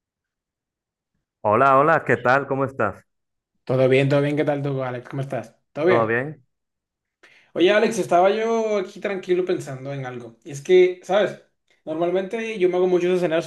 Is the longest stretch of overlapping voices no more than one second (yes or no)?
yes